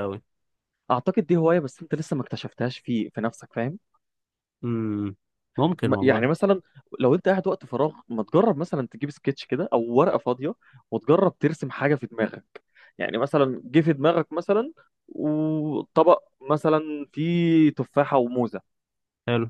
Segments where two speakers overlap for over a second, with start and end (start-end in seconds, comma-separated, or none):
none